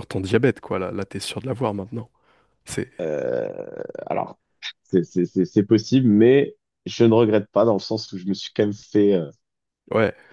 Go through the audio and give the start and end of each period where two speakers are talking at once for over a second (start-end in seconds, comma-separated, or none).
none